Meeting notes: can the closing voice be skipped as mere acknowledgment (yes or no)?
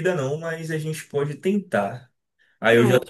yes